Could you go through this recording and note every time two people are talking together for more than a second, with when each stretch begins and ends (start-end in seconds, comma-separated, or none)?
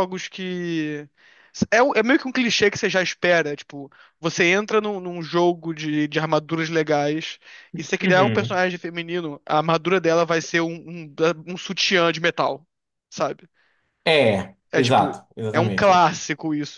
14.7-16.0